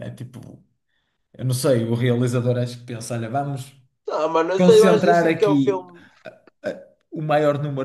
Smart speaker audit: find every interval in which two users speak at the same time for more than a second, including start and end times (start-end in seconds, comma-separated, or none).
4.6-5.9